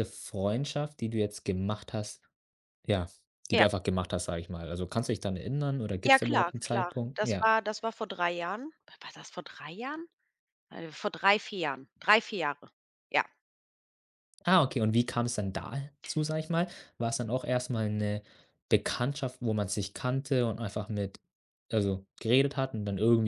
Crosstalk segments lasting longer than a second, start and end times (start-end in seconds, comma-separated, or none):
6.0-7.5